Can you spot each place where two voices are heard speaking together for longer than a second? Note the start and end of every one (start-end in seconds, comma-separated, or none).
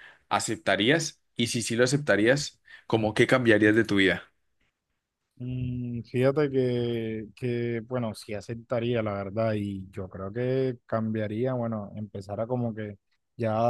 none